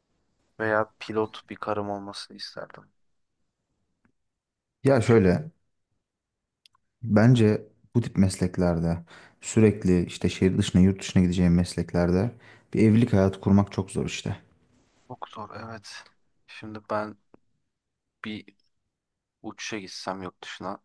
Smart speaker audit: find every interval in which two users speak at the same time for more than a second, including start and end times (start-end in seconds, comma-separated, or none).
none